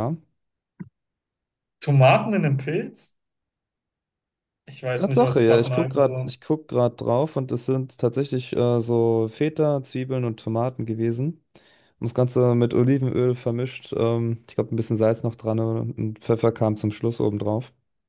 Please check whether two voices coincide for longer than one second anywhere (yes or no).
yes